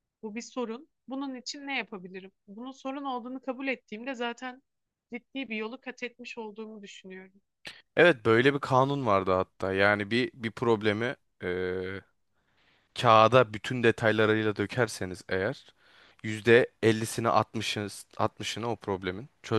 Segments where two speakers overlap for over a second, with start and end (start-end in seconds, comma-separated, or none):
none